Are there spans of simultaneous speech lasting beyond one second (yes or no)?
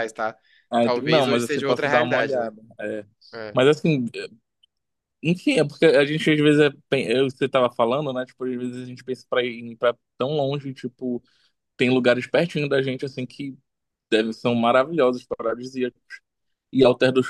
yes